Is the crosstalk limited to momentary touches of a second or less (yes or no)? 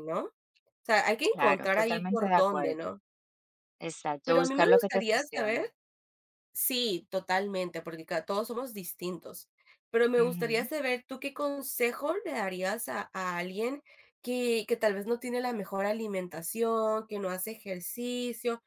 no